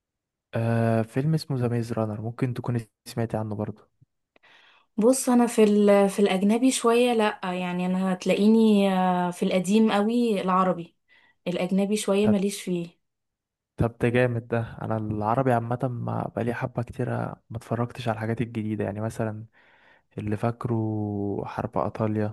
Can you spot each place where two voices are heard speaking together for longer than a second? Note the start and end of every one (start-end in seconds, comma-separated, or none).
none